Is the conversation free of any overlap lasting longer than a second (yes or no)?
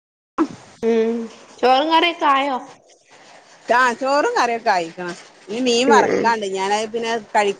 yes